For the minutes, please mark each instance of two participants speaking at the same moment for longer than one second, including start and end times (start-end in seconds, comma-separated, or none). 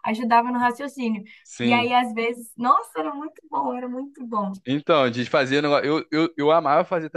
none